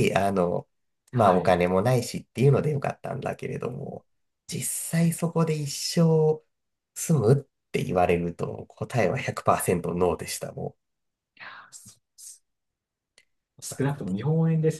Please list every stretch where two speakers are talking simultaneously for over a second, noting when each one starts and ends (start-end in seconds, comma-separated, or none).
none